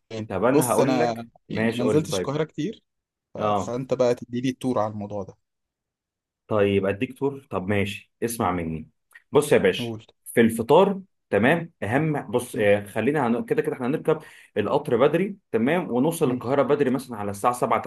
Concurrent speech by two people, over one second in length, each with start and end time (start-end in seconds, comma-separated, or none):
0.5-2.4